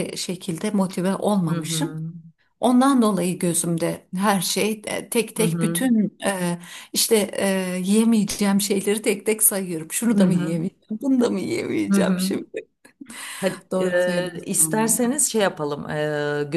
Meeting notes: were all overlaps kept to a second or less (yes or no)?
no